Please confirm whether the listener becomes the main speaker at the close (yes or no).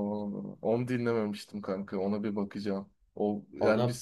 no